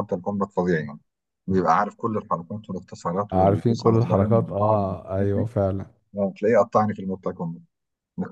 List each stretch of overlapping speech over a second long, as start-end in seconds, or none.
3.3-5.5